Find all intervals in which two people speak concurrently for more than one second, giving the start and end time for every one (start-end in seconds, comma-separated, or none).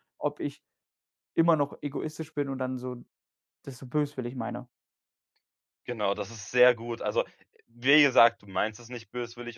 none